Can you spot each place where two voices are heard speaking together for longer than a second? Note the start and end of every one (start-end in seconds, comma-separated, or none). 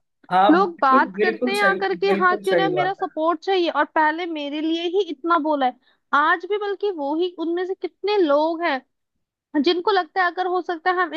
0.9-3.1